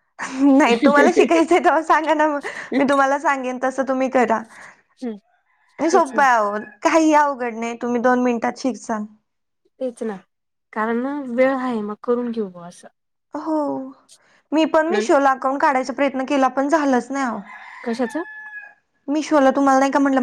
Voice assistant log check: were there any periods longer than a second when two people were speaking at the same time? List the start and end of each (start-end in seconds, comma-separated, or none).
none